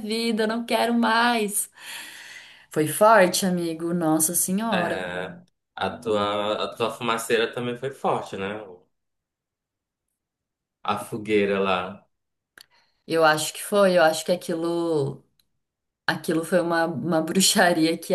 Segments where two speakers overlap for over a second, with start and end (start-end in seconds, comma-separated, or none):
none